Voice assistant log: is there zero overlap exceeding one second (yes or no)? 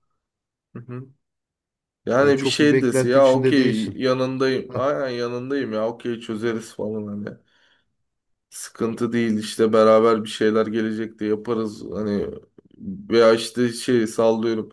no